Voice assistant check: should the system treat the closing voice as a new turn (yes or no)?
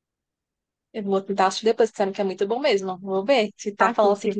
no